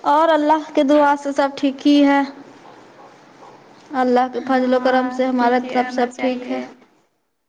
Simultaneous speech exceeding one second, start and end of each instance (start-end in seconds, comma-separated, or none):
4.6-6.6